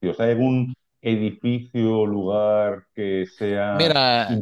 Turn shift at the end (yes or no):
yes